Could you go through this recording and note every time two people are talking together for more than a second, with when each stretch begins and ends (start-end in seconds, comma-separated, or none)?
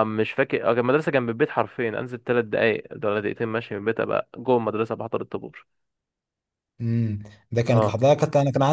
none